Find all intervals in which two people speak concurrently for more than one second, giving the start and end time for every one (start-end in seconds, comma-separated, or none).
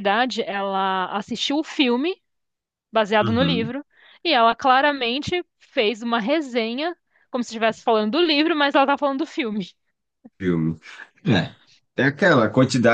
none